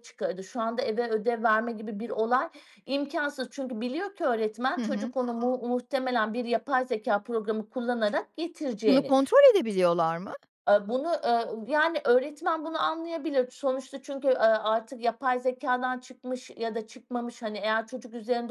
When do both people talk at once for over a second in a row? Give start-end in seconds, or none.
none